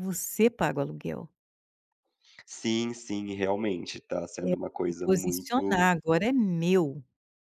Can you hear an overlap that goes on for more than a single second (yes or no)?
yes